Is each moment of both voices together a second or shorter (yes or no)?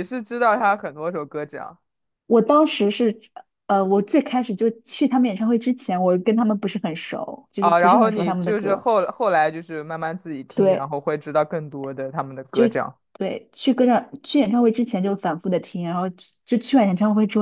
no